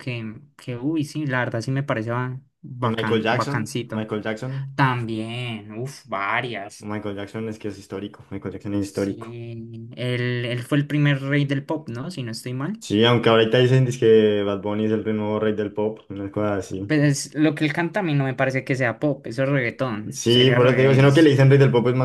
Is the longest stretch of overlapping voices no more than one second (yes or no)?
no